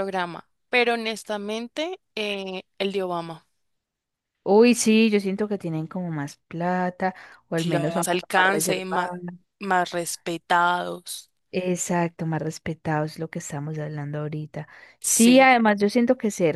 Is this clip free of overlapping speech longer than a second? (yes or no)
no